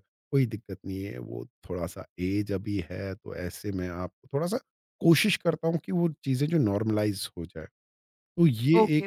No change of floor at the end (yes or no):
no